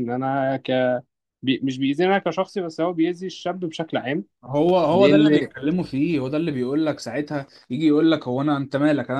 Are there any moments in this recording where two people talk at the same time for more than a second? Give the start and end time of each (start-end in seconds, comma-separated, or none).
none